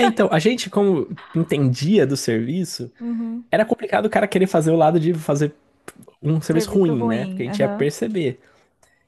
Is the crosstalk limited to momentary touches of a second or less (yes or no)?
no